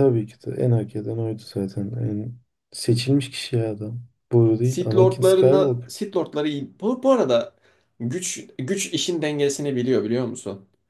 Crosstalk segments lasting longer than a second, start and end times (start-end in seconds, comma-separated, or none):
4.6-5.9